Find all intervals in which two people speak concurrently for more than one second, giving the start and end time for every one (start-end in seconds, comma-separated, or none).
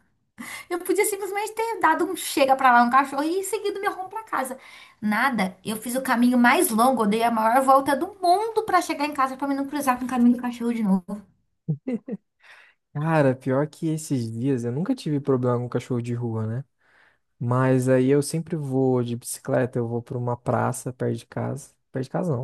none